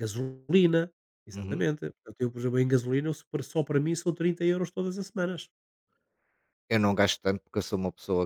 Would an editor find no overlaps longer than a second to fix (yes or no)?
yes